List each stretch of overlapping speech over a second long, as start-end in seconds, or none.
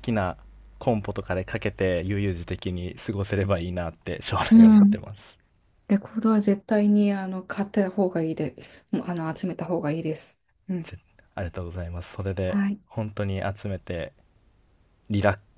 none